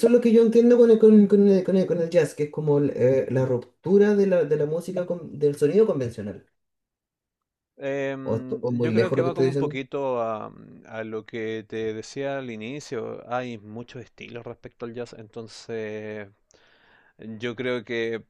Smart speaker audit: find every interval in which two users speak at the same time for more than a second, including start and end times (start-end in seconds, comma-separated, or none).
8.2-9.8